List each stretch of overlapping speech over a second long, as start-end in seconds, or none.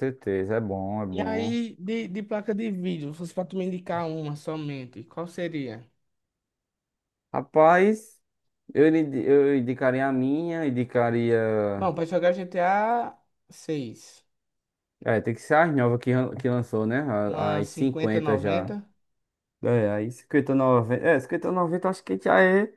17.2-18.8